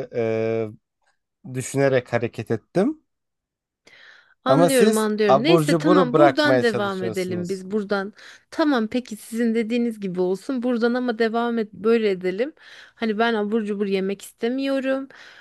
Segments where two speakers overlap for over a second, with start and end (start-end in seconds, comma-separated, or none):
4.5-7.6